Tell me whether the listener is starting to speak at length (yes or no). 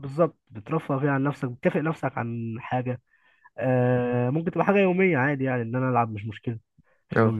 no